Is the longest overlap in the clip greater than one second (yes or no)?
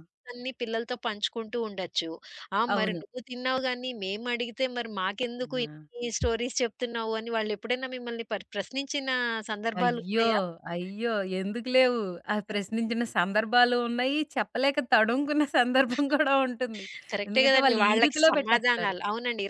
yes